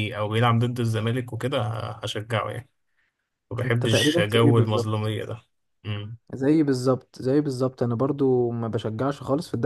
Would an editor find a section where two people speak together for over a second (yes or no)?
yes